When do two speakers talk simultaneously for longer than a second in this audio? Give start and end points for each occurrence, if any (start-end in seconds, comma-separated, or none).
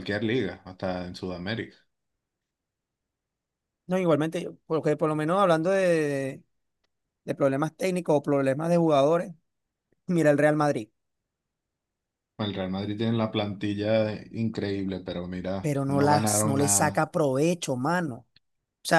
15.6-17.1